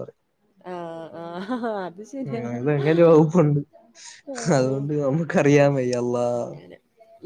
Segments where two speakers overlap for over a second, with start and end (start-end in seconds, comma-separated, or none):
none